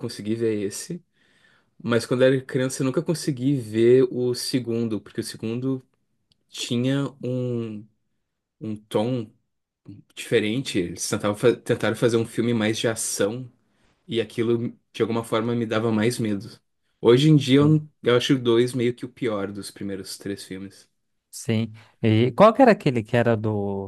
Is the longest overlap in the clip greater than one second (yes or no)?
no